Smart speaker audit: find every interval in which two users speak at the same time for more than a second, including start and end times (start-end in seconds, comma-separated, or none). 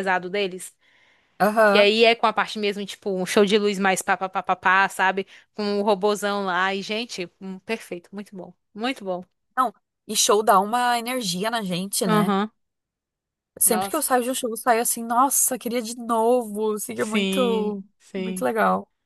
16.9-18.5